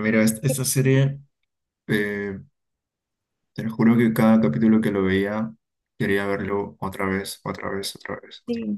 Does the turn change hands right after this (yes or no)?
yes